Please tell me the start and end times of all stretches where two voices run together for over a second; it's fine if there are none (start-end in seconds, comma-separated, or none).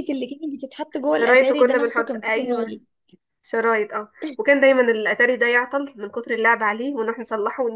1.1-2.7